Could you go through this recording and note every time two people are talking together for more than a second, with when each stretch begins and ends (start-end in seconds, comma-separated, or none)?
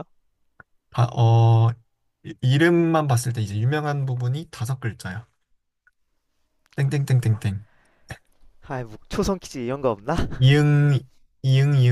none